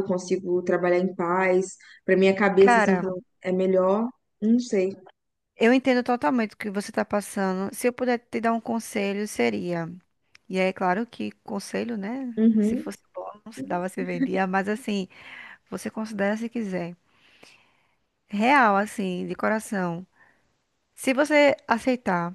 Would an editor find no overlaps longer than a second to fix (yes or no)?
yes